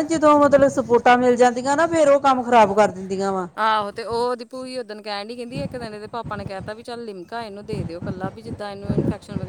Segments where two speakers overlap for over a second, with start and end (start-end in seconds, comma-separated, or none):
none